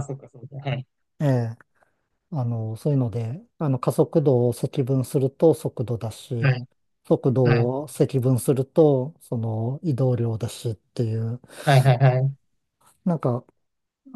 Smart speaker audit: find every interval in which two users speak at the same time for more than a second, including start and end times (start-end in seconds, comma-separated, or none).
none